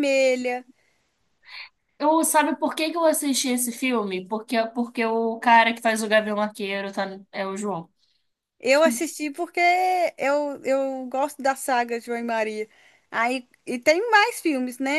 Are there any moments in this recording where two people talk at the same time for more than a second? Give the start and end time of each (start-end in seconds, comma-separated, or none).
none